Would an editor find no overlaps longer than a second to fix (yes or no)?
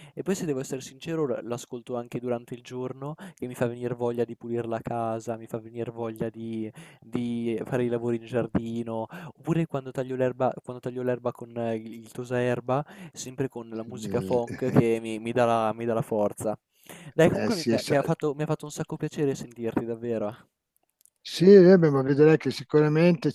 yes